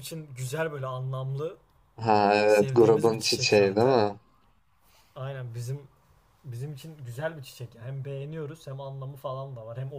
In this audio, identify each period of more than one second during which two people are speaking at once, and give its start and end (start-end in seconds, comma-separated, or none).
2.5-4.0